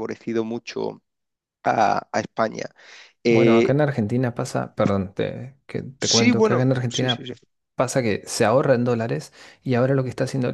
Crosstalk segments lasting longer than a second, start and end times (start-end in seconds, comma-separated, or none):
6.0-7.3